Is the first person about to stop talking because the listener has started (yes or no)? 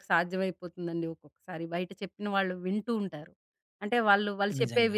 no